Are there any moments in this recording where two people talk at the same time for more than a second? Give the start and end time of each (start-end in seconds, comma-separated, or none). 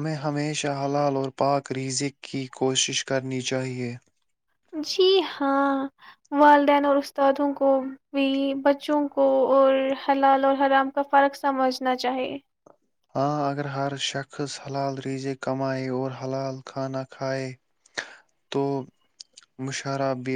none